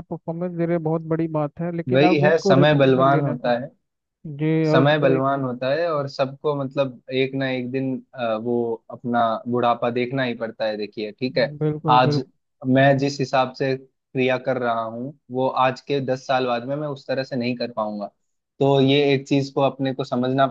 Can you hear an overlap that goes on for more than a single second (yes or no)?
yes